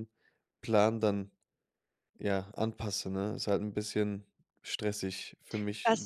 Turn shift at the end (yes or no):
yes